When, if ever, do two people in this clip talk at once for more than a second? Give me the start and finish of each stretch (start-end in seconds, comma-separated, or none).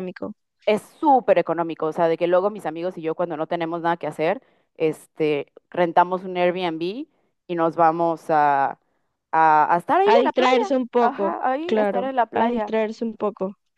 10.1-12.7